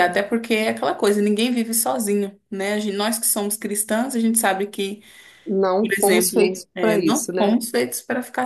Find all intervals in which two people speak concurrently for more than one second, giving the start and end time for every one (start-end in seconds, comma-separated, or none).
5.8-7.5